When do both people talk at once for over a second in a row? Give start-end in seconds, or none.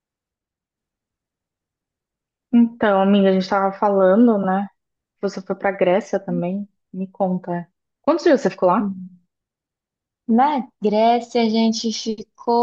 none